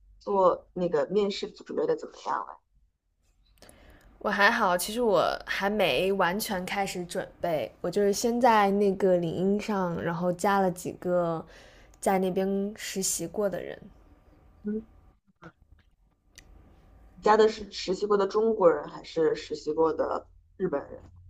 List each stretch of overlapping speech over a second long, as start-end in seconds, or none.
none